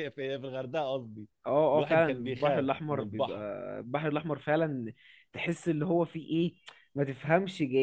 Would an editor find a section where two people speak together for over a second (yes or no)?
yes